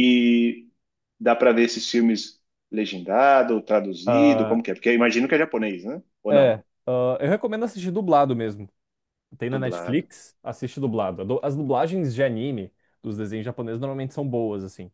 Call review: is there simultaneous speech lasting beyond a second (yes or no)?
no